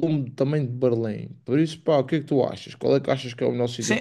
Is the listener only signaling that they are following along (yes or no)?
no